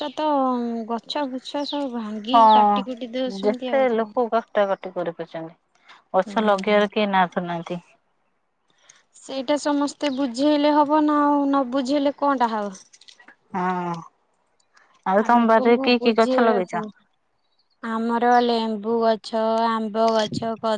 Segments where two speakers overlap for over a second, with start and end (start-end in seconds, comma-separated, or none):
15.2-16.8